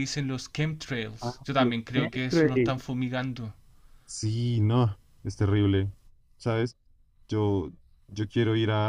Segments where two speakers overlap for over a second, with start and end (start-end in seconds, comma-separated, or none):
1.2-2.8